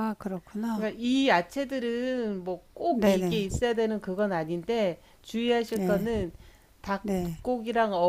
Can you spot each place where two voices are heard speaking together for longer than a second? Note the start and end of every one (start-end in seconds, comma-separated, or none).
none